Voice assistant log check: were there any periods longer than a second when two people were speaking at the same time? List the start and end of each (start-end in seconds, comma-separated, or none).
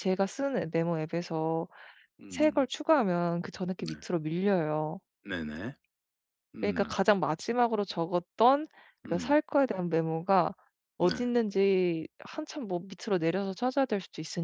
none